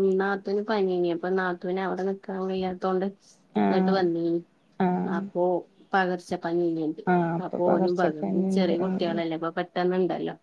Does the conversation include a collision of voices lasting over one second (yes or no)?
yes